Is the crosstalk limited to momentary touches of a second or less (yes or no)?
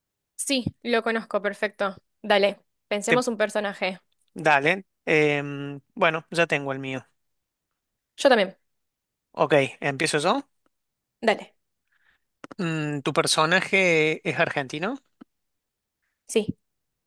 yes